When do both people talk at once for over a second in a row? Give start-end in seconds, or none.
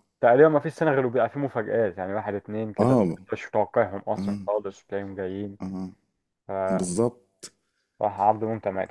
none